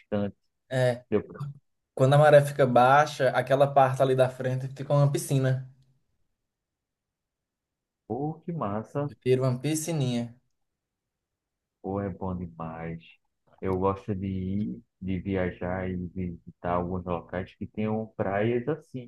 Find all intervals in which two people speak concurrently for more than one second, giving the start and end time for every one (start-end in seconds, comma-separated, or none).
none